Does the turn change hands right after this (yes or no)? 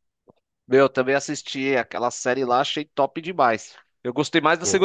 no